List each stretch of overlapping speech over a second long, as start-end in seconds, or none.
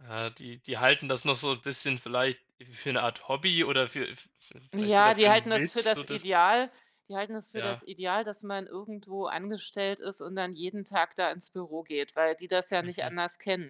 4.7-6.2